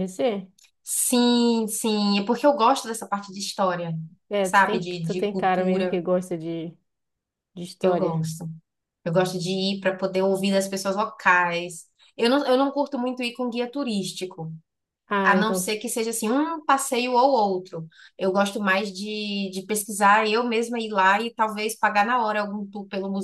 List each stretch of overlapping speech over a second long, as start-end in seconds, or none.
4.4-6.0